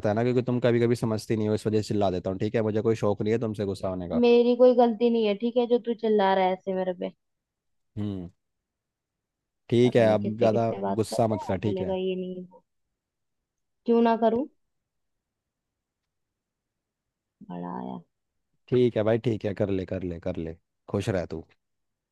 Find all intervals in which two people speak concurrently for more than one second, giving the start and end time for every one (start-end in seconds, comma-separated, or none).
9.8-12.0